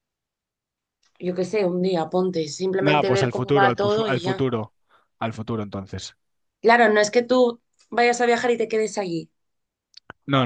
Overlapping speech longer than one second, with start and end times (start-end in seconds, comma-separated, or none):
2.8-4.5